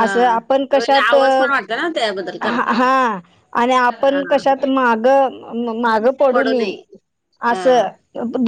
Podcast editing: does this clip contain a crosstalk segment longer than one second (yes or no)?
no